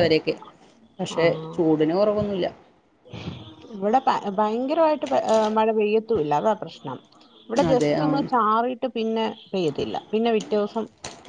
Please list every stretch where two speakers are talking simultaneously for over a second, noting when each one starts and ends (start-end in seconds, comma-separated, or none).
none